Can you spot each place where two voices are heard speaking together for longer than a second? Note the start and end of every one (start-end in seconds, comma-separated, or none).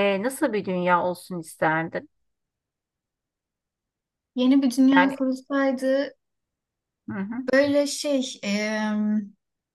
none